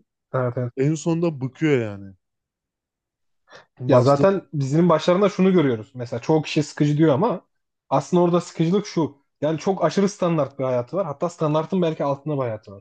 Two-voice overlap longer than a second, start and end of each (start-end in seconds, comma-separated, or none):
none